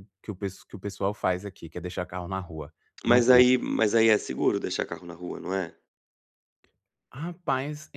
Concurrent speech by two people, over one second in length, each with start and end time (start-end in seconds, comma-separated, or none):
none